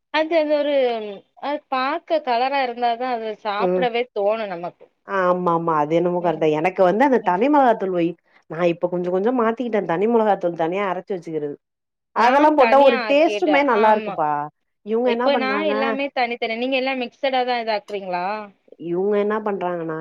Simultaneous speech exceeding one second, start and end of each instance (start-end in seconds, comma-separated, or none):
12.2-14.1